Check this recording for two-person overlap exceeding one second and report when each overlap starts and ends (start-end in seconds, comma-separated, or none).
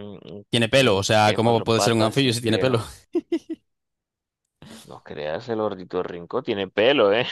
0.8-2.8